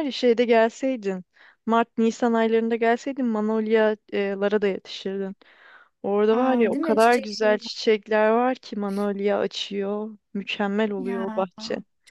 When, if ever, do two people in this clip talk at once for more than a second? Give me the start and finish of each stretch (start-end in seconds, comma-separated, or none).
6.3-7.7